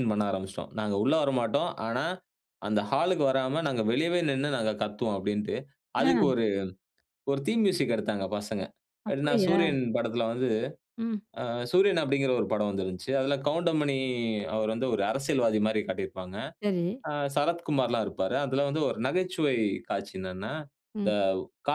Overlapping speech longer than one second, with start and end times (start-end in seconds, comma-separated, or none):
none